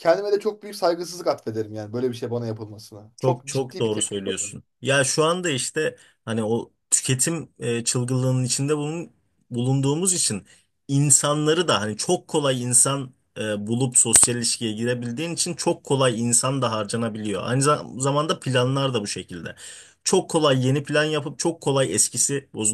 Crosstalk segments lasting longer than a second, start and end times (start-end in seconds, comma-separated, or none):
3.2-4.6